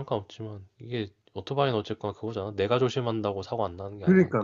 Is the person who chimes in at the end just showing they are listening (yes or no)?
no